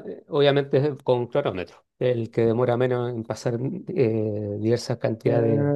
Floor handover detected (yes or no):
yes